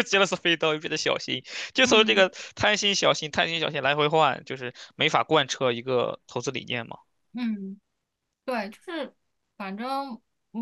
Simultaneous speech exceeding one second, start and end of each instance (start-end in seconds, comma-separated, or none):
none